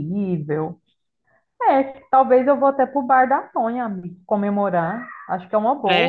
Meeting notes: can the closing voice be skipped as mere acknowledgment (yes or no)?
no